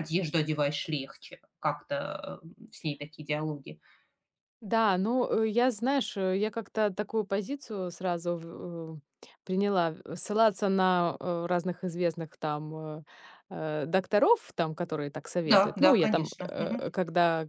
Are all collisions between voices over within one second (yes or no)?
no